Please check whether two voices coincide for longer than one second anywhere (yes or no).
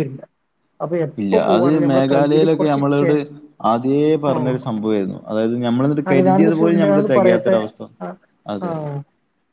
yes